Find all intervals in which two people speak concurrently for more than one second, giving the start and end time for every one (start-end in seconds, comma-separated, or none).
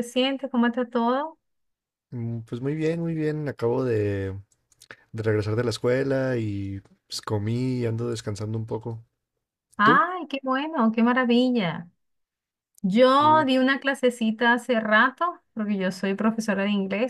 none